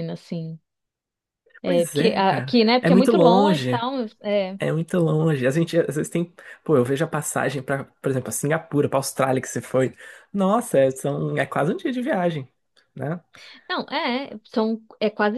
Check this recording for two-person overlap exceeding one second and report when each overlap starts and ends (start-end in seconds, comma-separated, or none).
1.6-3.8